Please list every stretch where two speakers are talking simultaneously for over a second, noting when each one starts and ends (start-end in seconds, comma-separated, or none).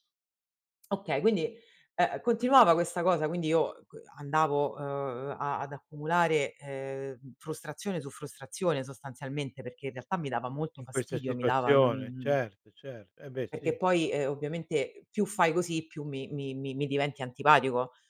10.8-12.4